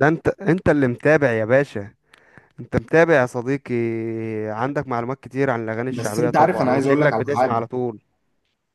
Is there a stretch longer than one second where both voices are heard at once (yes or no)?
yes